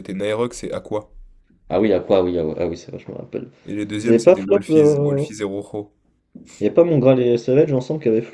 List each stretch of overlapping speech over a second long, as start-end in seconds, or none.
4.0-5.2